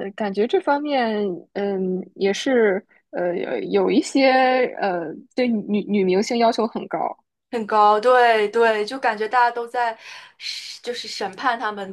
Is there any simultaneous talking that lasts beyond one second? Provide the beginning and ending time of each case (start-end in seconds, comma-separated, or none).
none